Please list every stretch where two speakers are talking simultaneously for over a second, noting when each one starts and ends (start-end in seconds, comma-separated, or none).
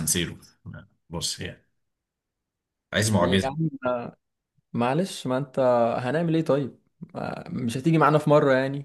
none